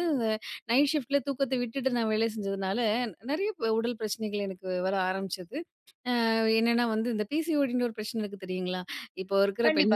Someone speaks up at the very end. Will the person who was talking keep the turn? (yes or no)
no